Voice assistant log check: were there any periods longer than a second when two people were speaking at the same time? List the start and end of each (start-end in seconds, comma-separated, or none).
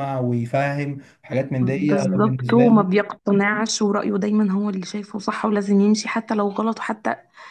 1.6-2.9